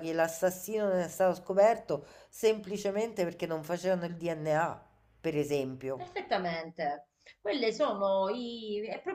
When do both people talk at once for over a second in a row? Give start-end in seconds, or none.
none